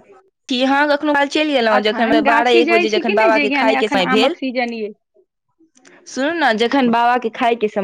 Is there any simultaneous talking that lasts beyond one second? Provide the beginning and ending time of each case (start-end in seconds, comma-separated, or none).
1.8-4.3